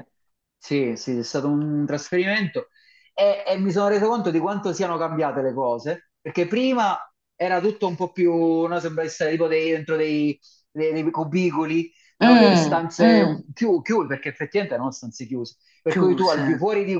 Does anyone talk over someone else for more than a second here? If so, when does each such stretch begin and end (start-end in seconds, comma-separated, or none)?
12.2-13.4